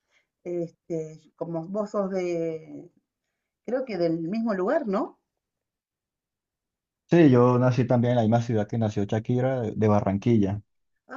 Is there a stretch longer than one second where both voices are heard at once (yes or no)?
no